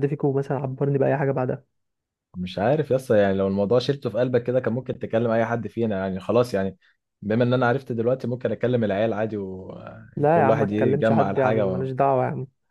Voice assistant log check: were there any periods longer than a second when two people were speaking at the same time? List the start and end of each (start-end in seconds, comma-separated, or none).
10.2-11.9